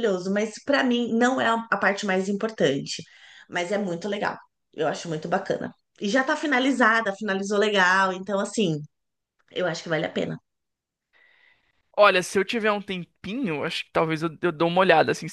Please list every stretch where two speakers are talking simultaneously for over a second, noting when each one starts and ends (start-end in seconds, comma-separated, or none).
none